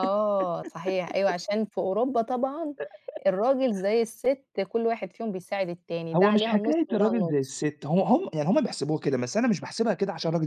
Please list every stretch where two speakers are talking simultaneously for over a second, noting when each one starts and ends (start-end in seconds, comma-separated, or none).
6.1-7.6